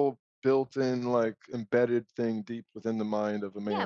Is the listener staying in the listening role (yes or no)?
no